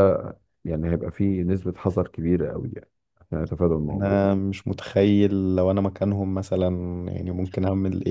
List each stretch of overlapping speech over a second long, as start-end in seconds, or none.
none